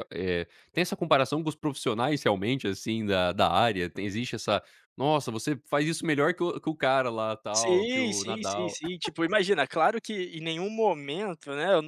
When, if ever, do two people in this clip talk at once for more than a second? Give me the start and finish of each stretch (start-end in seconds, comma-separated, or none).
7.5-8.8